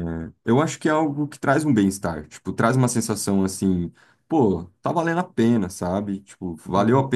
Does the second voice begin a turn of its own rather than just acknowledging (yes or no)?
no